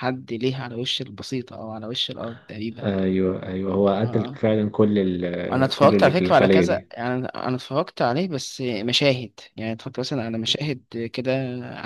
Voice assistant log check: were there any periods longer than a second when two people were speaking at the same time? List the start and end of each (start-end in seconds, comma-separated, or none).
5.5-6.9